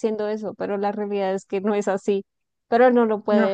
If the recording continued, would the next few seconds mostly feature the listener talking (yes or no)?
no